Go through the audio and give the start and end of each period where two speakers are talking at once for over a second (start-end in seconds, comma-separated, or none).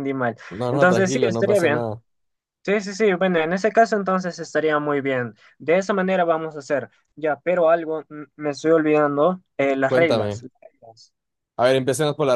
0.5-1.8